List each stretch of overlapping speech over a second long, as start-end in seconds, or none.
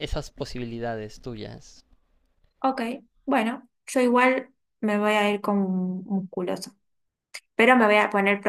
none